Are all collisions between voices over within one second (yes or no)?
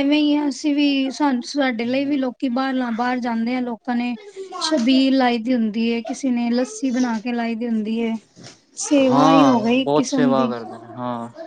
no